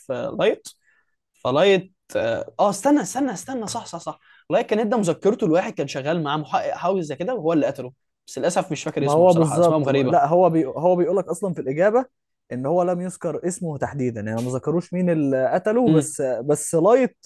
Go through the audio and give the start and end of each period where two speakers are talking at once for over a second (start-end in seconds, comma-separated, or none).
9.0-10.2